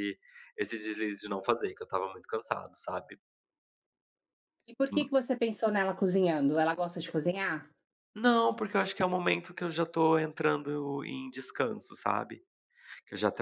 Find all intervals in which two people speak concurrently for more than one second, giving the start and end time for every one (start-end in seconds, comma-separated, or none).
none